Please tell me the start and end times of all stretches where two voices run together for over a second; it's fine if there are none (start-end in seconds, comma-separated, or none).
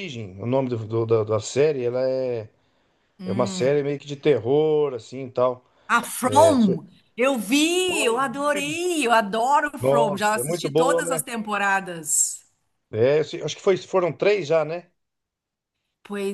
9.8-11.2